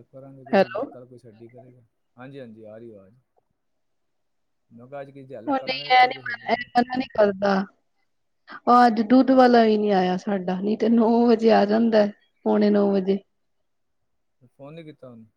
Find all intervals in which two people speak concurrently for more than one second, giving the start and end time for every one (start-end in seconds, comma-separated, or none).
5.5-6.7